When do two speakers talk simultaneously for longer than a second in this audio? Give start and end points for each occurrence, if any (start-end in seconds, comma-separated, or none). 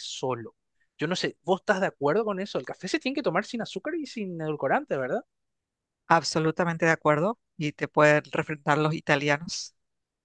none